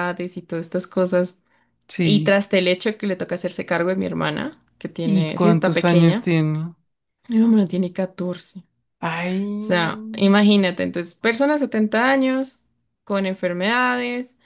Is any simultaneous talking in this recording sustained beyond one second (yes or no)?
yes